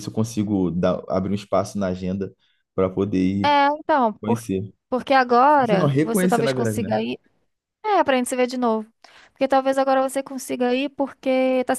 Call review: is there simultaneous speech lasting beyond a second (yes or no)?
yes